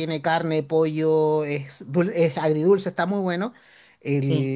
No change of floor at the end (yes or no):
yes